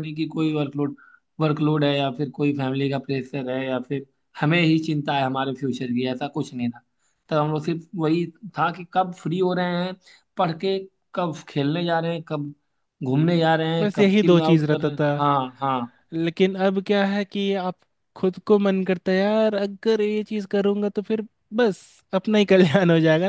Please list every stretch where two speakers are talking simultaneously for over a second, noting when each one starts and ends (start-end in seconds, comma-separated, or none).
13.8-15.1